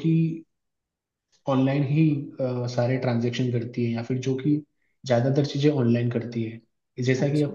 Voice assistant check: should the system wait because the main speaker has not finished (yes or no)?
yes